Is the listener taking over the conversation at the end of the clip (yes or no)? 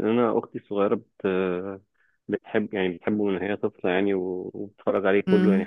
no